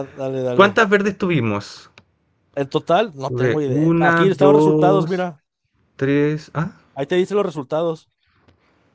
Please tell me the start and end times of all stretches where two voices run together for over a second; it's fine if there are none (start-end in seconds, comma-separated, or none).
3.2-5.3